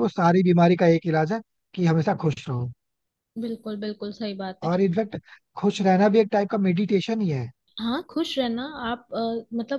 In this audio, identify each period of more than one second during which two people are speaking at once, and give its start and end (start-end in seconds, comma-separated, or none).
none